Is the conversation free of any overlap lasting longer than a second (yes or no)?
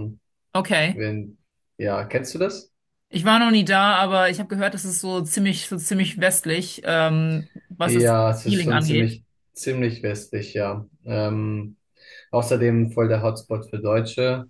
no